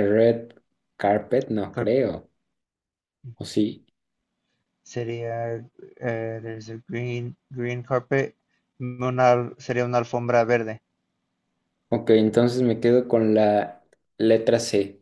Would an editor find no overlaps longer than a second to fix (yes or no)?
yes